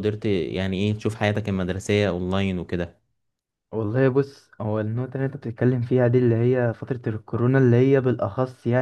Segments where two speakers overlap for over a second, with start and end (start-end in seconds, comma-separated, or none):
none